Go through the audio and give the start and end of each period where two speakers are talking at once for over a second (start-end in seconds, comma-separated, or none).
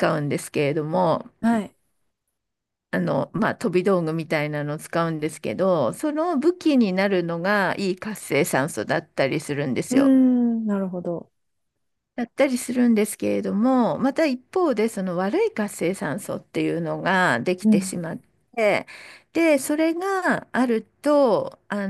none